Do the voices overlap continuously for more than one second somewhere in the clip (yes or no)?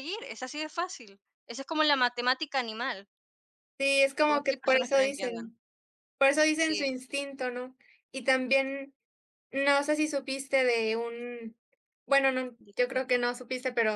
yes